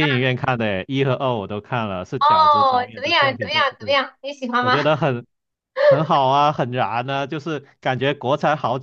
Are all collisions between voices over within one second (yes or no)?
no